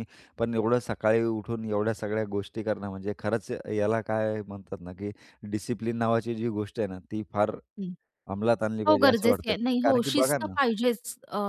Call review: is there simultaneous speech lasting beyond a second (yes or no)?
yes